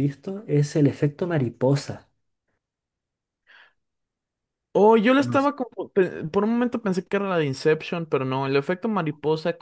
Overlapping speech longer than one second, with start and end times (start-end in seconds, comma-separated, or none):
none